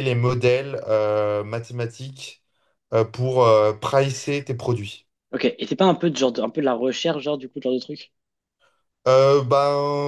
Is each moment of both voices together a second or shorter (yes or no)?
yes